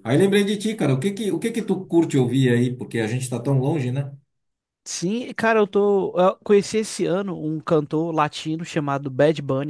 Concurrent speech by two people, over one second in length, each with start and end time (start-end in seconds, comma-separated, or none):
none